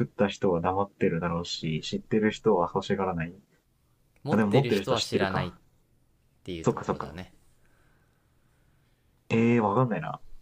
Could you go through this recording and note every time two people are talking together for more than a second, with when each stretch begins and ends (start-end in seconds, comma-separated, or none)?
4.3-5.5